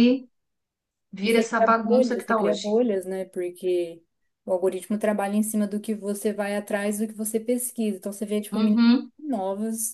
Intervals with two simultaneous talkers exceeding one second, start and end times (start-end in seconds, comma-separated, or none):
1.2-2.6